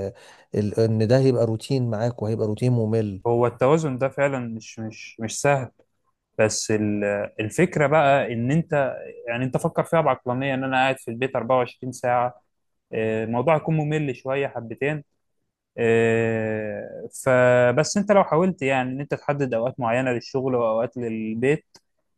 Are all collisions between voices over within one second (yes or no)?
yes